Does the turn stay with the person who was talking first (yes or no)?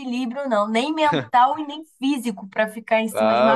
no